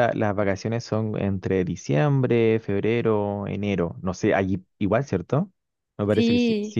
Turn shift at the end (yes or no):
yes